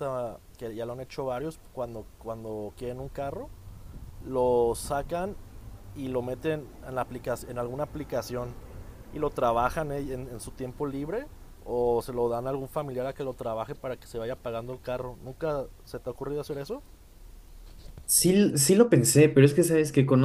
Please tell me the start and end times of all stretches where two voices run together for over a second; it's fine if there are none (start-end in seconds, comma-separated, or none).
none